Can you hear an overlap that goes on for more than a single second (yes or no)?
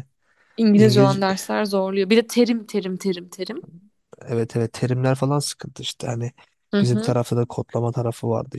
no